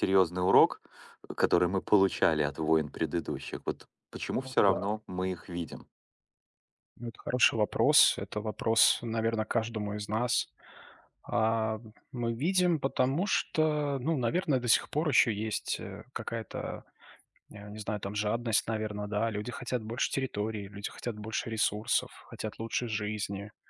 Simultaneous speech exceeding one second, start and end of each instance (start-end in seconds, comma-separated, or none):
none